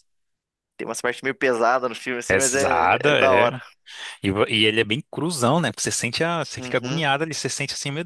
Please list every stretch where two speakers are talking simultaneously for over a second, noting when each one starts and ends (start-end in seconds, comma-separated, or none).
2.3-3.5